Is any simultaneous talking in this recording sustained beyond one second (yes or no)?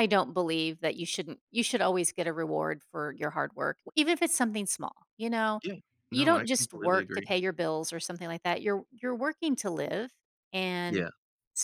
yes